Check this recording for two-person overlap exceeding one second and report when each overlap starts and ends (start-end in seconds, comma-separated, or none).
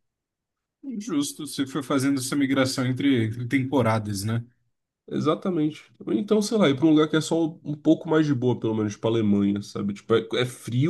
none